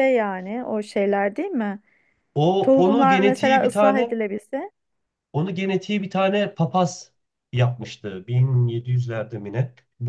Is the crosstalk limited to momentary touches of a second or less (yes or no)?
no